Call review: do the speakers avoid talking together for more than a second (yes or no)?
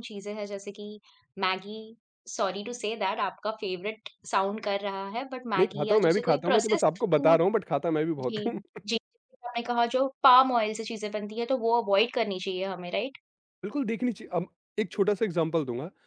no